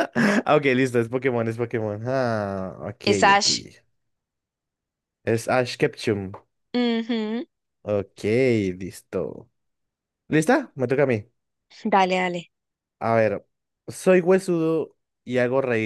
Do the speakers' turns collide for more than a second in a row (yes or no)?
no